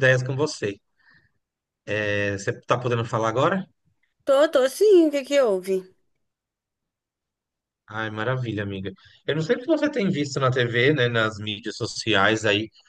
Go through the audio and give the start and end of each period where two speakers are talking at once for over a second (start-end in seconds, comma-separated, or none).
none